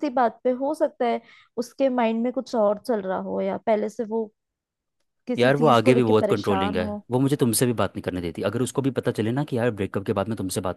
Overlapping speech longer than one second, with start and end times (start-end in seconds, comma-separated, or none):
5.4-7.0